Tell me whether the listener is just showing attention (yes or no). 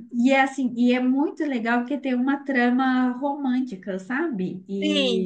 yes